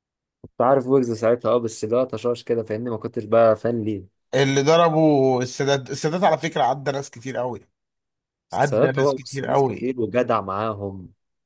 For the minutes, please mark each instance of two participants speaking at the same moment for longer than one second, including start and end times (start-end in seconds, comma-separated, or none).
8.5-9.9